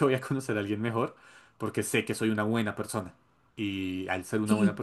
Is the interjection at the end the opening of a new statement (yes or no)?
no